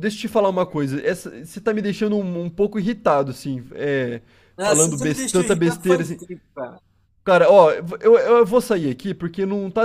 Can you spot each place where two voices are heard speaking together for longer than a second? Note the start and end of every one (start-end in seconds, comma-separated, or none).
4.6-6.2